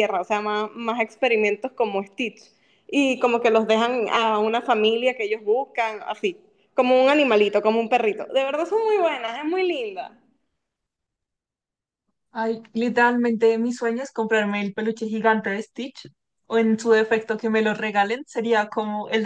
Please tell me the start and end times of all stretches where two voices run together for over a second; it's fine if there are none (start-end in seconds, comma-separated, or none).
none